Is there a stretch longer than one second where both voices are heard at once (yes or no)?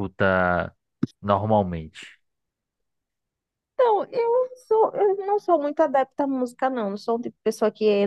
no